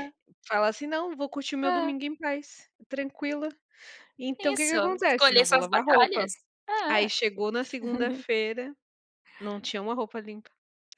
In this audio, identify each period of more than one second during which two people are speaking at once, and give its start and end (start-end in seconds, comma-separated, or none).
4.4-6.3